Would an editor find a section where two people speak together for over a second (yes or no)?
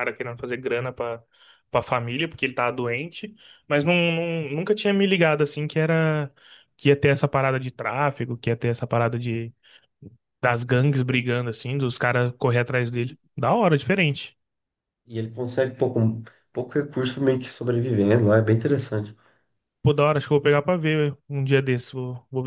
no